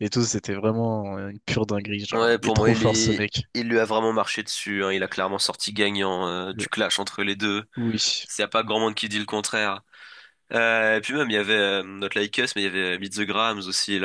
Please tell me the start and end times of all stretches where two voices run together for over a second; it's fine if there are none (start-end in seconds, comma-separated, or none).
2.1-3.4